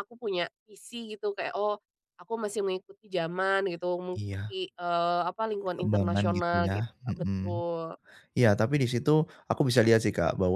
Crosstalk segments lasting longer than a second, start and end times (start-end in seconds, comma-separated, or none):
5.7-7.6